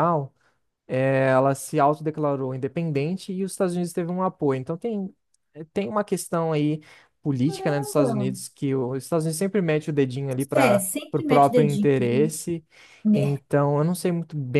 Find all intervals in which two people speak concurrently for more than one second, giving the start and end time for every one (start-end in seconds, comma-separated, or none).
10.5-11.9